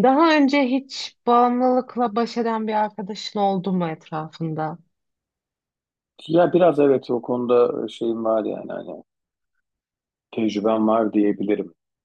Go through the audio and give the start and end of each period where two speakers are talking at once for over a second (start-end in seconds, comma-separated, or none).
none